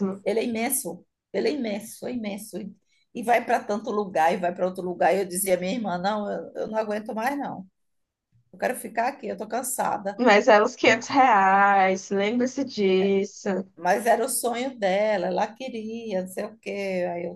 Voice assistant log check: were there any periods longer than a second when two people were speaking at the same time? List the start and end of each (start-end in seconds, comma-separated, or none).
none